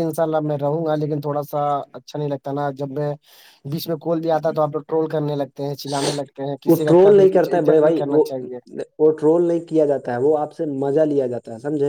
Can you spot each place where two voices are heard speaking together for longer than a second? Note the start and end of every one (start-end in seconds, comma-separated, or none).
6.7-8.2